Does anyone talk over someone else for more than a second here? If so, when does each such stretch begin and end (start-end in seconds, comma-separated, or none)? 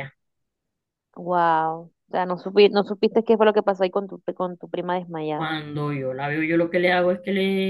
none